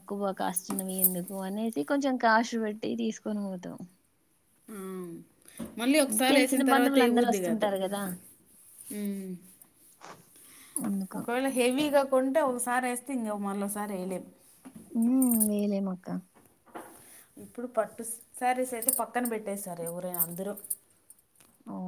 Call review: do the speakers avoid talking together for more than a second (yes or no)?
no